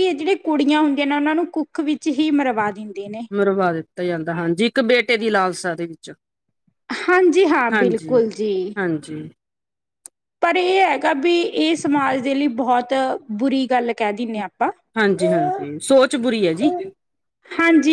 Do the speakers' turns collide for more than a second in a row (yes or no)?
no